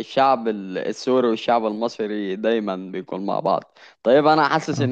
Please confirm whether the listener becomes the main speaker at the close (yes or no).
no